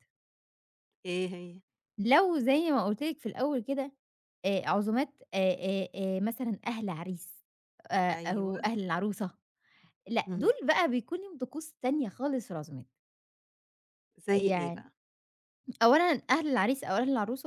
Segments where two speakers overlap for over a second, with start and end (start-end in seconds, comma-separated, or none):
none